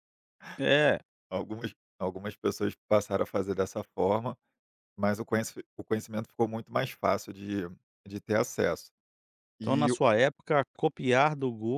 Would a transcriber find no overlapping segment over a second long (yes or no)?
yes